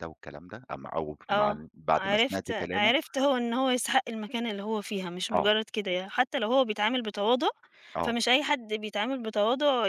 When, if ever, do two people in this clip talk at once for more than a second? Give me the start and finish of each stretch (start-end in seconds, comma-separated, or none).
1.3-2.9